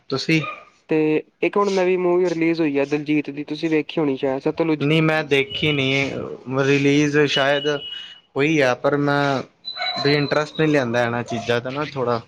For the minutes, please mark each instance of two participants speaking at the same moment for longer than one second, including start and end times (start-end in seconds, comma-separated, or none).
none